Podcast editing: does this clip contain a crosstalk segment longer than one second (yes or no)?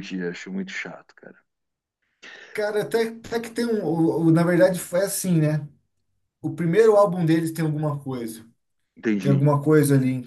no